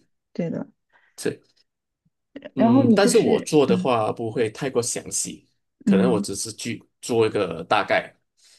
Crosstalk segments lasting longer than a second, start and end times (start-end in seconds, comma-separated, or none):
2.6-3.9